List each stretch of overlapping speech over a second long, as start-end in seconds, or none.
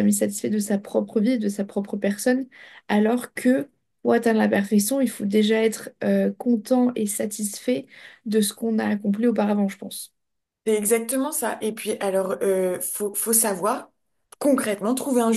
none